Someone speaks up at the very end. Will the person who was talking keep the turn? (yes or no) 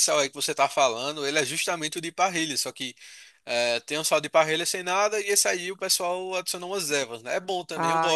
no